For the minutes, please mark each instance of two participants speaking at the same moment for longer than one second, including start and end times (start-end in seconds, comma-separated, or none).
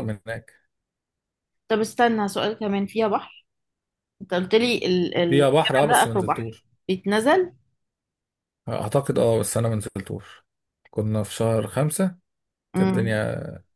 5.3-6.7